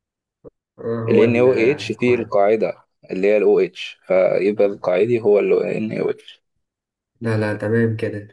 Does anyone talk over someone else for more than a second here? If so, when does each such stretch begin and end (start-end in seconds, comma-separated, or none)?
1.1-2.3